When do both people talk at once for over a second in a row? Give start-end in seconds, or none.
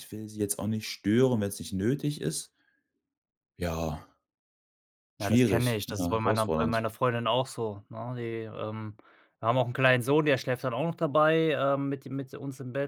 5.2-6.8